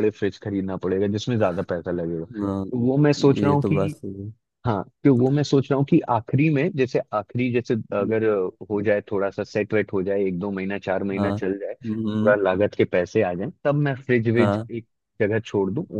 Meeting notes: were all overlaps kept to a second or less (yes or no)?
no